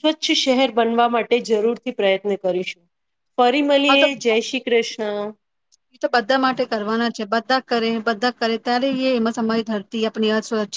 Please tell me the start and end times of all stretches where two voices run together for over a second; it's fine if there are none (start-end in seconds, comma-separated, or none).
none